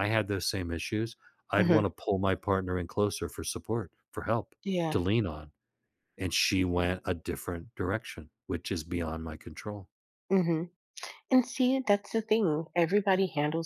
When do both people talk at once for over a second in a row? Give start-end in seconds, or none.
none